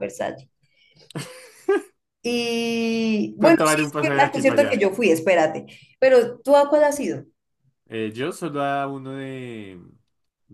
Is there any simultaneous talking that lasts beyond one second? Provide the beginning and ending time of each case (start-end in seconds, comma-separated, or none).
3.4-4.8